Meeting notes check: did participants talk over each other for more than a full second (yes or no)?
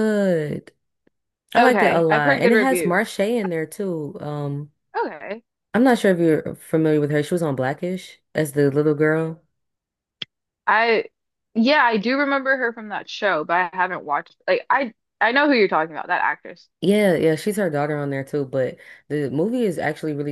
yes